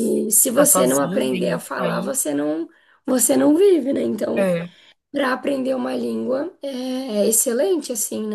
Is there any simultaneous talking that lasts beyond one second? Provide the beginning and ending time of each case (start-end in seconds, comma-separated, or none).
0.5-2.3